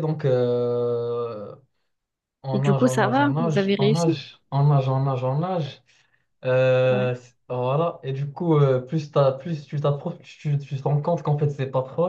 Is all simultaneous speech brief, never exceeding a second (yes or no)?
no